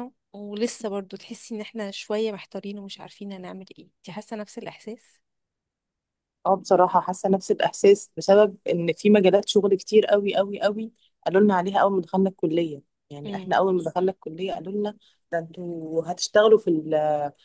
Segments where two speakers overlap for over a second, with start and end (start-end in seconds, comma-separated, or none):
none